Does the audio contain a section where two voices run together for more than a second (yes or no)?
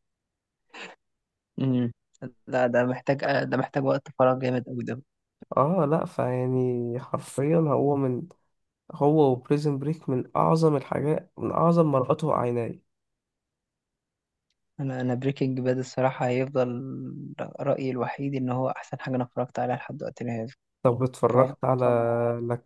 no